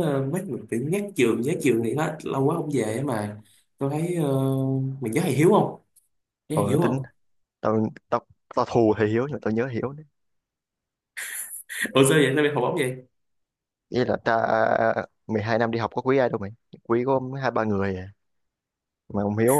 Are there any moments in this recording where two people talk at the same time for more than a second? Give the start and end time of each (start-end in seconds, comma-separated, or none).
none